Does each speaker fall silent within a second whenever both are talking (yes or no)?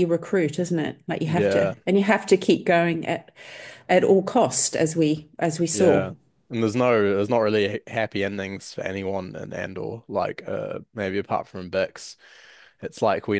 yes